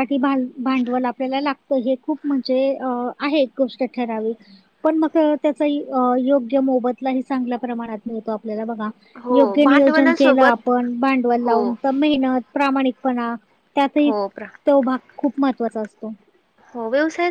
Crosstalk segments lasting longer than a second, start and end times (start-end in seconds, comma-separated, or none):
9.3-10.7